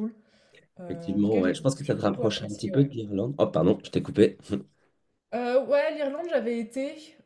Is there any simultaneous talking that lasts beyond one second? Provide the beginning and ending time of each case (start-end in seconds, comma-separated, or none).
0.9-2.9